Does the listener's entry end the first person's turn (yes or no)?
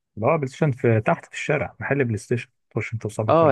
yes